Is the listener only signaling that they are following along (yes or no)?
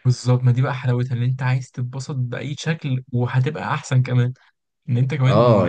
no